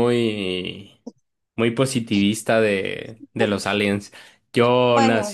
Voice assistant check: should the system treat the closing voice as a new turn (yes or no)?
no